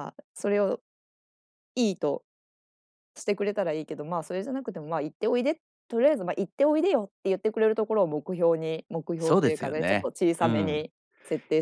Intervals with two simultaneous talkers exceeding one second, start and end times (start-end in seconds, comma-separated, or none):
9.2-10.8